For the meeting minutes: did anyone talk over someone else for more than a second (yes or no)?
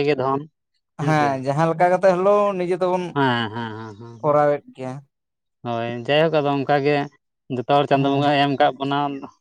no